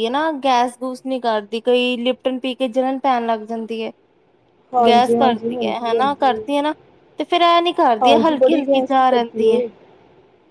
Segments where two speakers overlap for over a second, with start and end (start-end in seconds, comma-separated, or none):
4.8-6.4, 8.0-9.6